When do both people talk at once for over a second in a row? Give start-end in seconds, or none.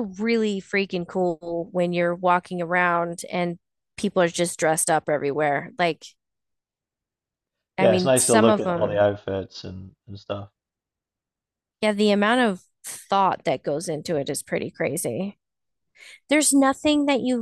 7.8-9.0